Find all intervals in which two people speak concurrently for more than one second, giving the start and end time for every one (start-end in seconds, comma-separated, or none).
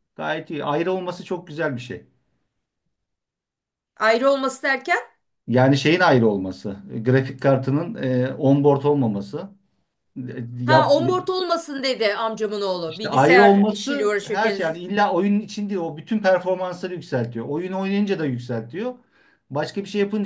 12.9-14.8